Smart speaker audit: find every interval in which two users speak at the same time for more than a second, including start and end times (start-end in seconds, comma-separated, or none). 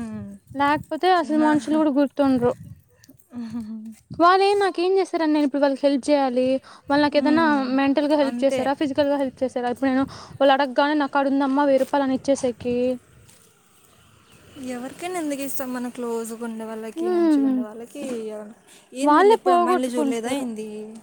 19.1-20.4